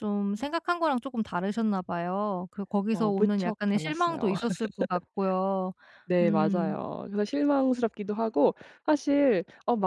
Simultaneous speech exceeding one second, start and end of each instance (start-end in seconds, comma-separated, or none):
2.9-4.3